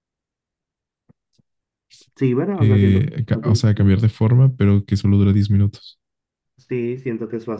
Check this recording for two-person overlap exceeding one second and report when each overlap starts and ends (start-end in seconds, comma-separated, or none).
2.5-3.9